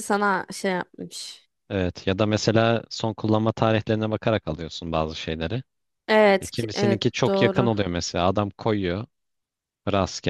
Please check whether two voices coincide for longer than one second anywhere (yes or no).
yes